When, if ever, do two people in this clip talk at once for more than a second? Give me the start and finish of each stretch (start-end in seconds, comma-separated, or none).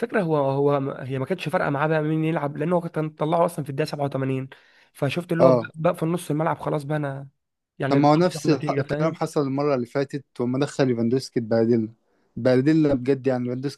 7.9-9.2